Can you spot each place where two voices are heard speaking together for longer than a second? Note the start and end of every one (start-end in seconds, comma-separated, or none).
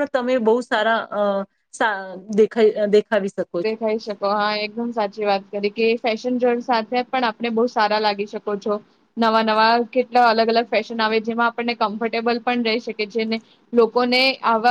none